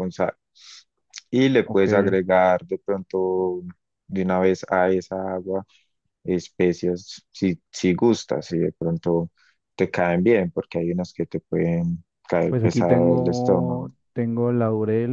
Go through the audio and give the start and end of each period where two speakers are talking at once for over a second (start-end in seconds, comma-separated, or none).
12.5-13.9